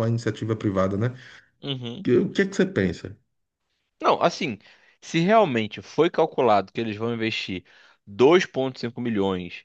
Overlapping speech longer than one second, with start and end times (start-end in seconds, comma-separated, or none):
none